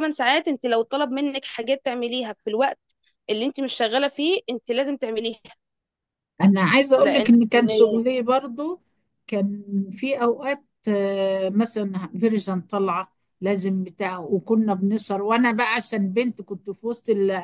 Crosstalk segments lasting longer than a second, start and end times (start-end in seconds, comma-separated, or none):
none